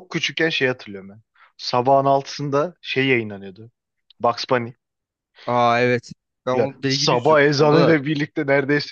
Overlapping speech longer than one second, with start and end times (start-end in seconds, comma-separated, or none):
6.5-8.0